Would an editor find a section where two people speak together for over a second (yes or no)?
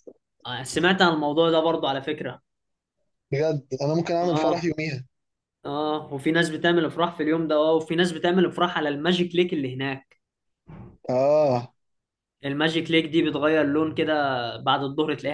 no